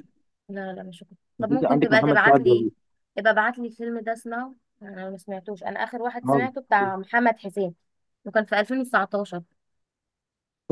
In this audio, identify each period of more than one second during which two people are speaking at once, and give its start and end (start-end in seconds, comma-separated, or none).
1.4-2.7